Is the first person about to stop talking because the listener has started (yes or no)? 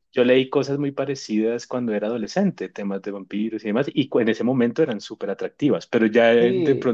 no